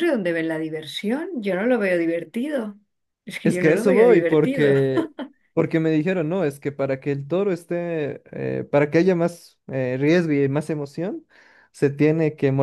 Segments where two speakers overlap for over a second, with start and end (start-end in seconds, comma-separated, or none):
3.4-4.7